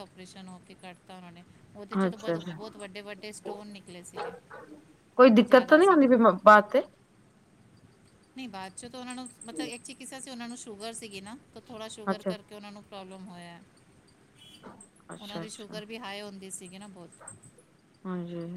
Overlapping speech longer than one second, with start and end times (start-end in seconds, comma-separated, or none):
none